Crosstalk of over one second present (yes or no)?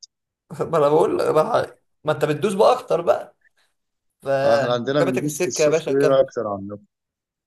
yes